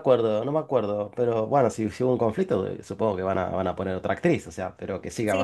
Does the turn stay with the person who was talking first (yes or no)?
no